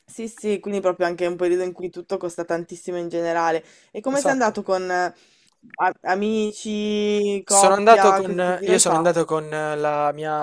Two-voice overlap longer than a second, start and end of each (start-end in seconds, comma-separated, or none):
7.5-9.1